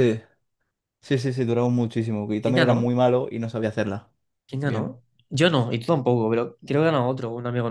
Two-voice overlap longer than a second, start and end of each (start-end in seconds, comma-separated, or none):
none